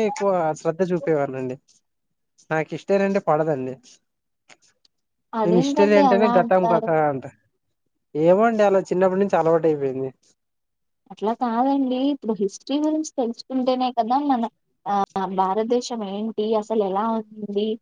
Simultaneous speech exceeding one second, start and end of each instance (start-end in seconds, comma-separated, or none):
5.5-6.9